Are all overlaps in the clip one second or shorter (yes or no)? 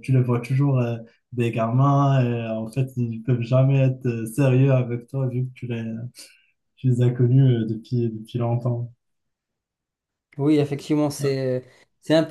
yes